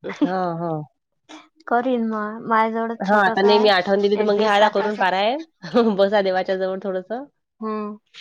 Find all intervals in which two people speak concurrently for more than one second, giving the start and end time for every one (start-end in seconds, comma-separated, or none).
3.1-5.0